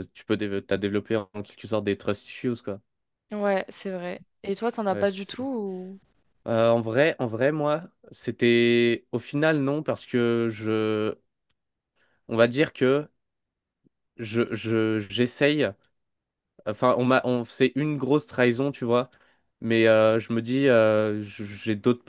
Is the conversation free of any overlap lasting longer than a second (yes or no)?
yes